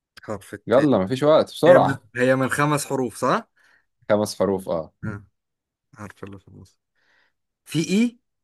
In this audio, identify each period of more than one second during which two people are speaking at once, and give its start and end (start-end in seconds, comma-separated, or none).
none